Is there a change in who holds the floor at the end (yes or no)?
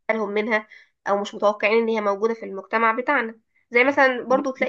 no